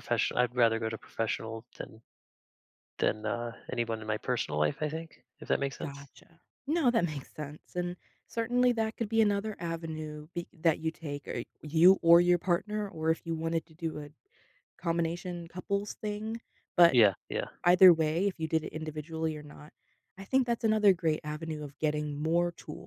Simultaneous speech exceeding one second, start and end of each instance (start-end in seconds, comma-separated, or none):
none